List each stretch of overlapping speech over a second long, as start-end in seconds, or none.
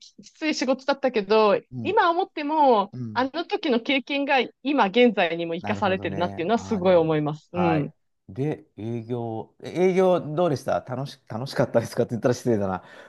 5.6-7.9